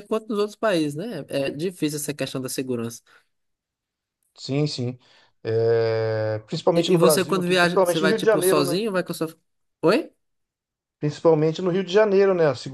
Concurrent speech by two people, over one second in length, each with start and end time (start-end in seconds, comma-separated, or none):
6.8-8.8